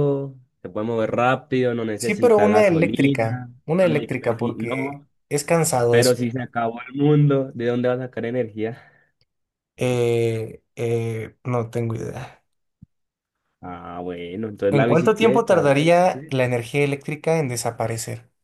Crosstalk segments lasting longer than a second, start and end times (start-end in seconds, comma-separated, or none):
2.0-5.1, 14.7-16.4